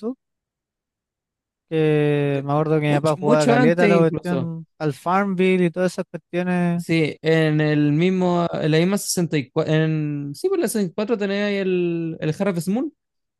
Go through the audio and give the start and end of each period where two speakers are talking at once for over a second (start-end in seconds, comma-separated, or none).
2.2-4.5